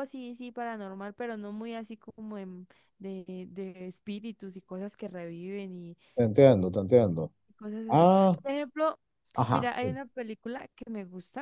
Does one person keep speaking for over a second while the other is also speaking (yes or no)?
no